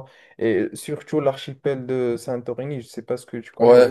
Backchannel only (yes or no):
no